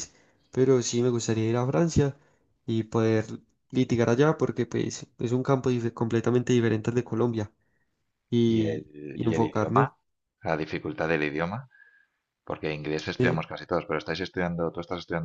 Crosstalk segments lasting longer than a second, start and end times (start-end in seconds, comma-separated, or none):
8.5-9.9